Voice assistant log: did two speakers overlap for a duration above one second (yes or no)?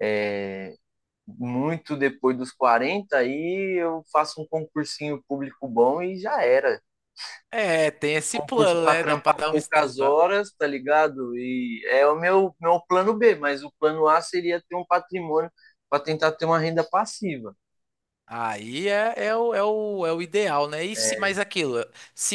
yes